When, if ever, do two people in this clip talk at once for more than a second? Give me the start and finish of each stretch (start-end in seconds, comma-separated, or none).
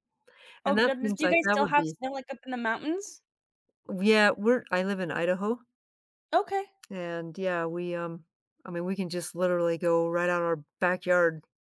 0.6-2.0